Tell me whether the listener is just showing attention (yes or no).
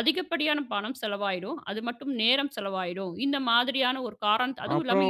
no